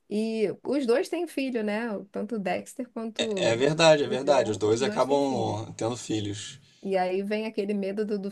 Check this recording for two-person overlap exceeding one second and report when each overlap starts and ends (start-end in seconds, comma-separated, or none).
4.0-5.6